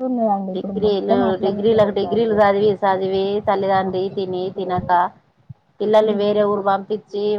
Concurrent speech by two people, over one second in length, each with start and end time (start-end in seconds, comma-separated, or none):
0.6-2.3